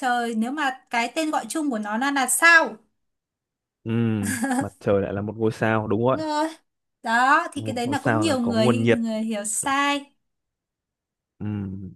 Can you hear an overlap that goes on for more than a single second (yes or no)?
yes